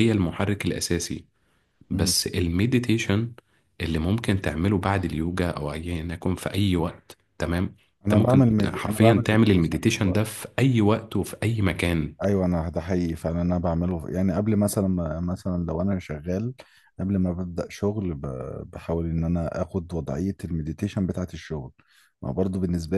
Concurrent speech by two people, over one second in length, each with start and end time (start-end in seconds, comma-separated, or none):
8.1-10.4